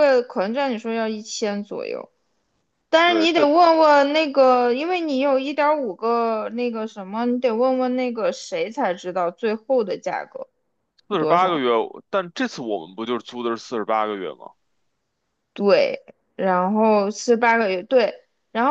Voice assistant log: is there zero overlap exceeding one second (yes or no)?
yes